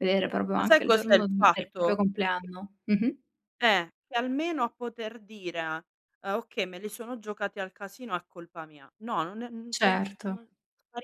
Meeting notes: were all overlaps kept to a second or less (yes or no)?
no